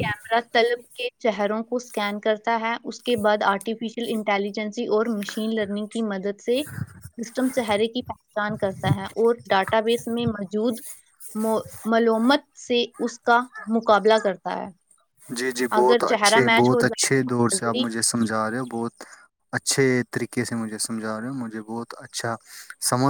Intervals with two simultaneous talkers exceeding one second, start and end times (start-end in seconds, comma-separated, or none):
15.8-17.8